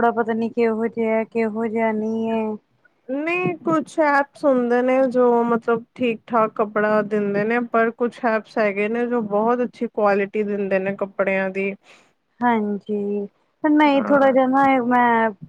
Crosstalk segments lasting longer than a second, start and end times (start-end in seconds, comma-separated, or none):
none